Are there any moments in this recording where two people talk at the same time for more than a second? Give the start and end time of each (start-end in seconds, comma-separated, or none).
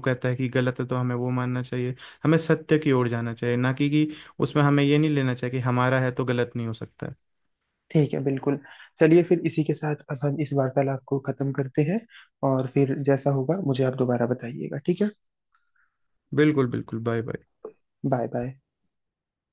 none